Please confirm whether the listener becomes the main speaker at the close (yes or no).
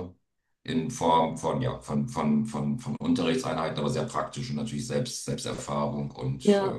no